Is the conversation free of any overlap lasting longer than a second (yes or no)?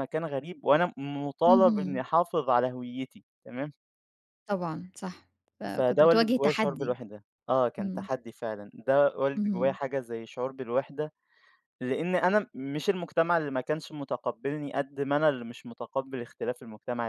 no